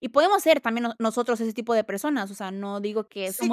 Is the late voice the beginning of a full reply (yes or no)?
yes